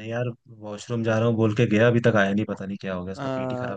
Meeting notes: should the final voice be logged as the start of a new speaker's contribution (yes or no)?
yes